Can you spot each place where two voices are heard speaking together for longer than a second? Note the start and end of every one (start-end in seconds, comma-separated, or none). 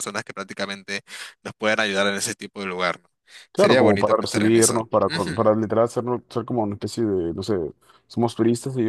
3.6-5.5